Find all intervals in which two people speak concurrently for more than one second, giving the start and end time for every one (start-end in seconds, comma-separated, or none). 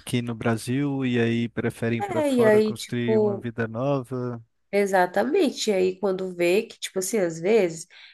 2.0-3.5